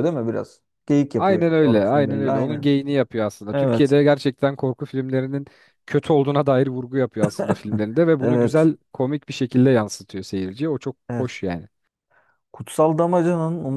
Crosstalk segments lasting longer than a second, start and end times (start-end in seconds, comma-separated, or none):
1.2-2.7